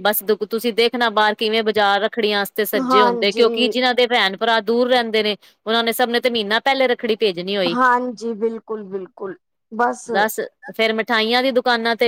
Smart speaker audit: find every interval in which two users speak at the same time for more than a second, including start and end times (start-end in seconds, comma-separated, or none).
none